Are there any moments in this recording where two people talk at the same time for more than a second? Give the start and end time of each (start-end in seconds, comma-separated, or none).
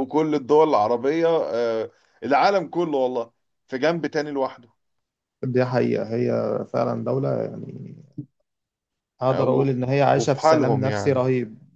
9.3-11.2